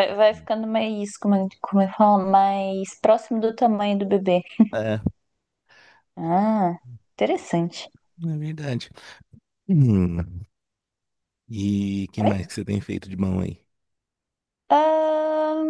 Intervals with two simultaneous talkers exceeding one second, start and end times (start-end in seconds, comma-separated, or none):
none